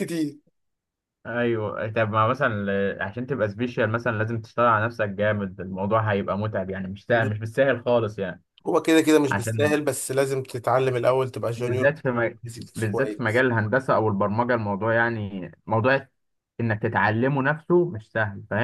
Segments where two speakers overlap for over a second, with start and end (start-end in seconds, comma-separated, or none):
11.6-13.4